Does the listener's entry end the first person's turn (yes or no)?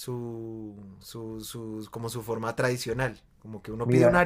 no